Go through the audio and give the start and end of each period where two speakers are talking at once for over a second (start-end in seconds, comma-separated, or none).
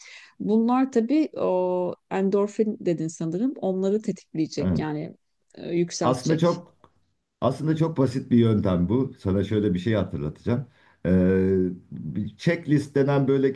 none